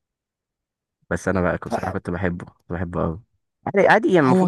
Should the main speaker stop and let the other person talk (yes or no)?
no